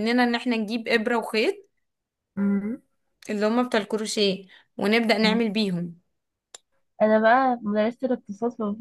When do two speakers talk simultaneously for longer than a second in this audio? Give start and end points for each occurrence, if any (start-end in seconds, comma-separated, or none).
none